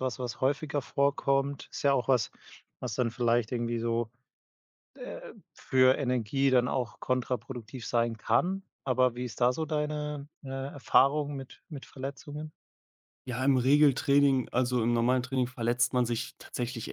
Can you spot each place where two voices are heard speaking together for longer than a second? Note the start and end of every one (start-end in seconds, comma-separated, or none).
none